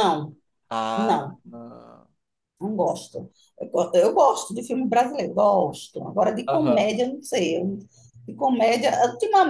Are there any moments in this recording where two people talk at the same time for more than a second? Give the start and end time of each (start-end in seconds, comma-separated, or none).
none